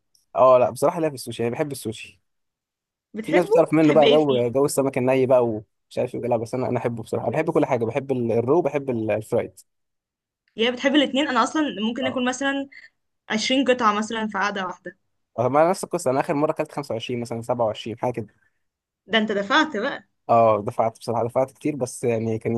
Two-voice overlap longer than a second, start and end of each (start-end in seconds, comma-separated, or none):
3.2-4.4